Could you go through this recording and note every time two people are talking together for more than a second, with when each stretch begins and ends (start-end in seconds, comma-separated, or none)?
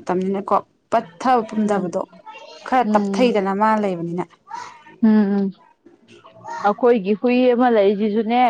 none